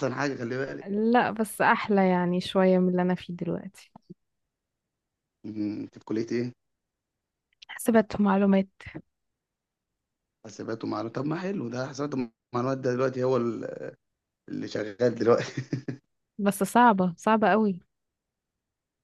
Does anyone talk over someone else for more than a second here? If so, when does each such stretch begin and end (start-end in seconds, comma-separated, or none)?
none